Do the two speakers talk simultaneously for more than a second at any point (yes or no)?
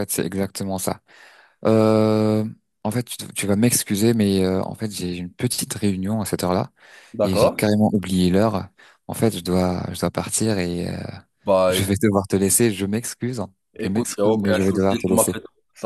yes